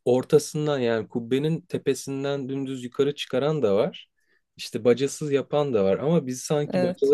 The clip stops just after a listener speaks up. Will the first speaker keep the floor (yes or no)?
yes